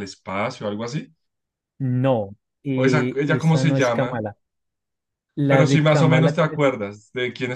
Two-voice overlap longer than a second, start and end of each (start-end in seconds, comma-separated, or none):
2.8-4.2, 5.5-6.7